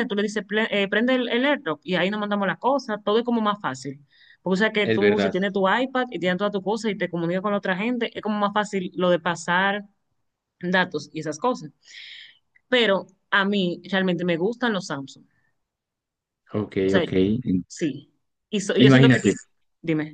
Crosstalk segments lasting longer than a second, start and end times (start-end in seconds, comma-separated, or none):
none